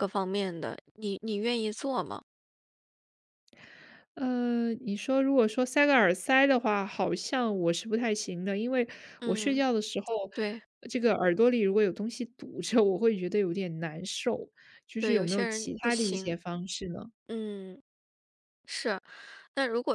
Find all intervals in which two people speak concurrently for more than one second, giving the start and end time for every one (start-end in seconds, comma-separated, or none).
15.0-16.4